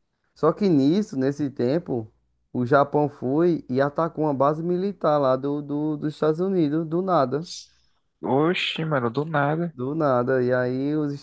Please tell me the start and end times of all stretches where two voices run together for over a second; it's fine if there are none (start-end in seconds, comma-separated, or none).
none